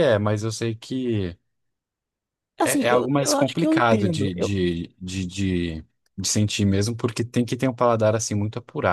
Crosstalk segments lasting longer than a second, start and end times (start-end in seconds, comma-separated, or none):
2.6-4.5